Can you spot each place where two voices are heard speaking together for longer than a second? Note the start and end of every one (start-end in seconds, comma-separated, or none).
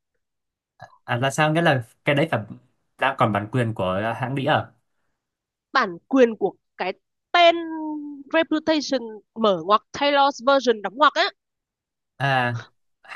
none